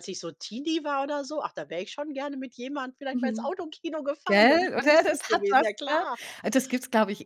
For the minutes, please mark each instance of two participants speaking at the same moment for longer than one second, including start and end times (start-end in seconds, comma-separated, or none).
4.2-6.0